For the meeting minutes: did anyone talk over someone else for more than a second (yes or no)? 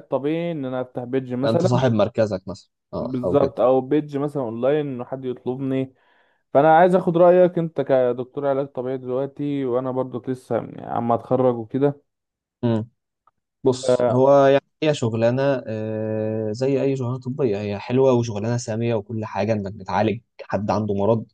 no